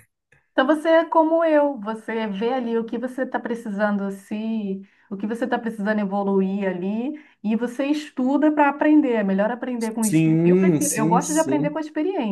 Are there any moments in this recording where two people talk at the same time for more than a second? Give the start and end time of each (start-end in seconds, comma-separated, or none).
10.0-11.8